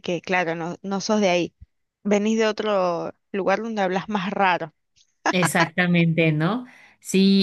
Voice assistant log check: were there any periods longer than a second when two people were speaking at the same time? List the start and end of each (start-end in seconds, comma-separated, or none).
none